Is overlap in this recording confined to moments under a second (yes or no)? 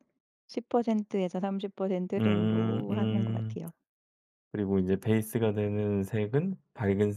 no